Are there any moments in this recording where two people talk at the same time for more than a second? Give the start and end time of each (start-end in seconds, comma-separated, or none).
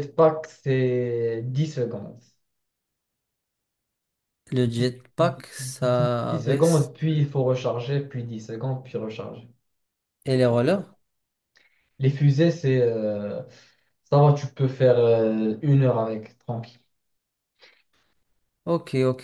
5.2-6.9